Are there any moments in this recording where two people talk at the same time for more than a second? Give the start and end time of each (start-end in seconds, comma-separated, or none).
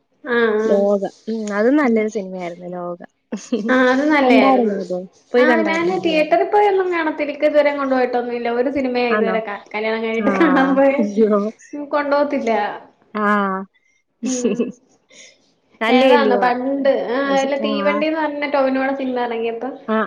none